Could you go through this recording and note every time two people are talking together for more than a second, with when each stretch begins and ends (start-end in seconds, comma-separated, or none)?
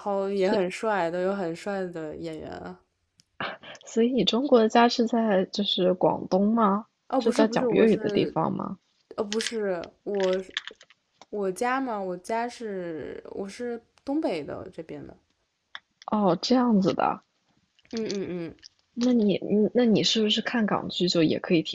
7.1-8.4